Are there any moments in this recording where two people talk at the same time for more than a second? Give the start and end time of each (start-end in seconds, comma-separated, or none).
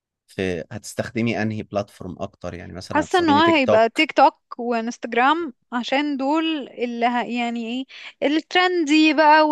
2.9-4.1